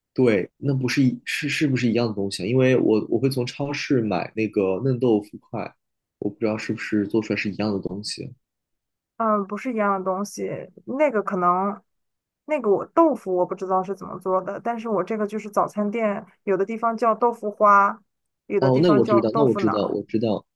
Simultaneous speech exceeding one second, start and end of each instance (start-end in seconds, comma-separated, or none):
18.6-20.0